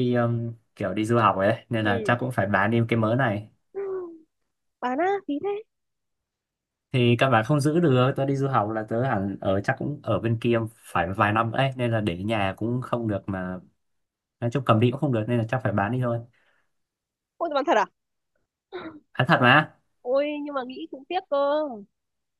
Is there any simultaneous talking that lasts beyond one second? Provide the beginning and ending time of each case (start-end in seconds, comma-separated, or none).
none